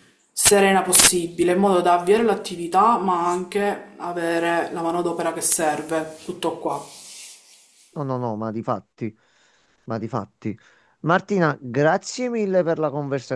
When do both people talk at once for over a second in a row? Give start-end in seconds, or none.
none